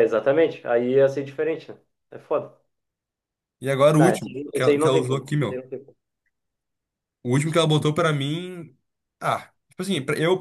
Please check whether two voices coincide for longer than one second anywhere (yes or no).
yes